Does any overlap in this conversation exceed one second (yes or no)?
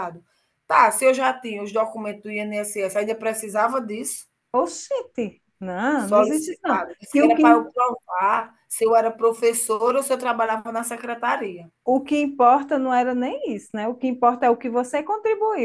yes